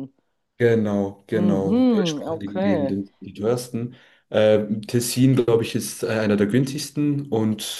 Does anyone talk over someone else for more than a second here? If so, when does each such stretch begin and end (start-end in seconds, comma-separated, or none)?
1.3-2.9